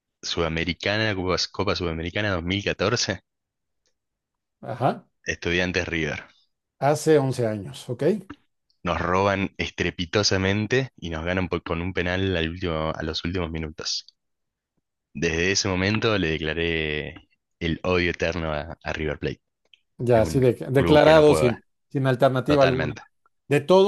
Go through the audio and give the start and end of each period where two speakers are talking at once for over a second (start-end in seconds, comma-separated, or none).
20.1-21.6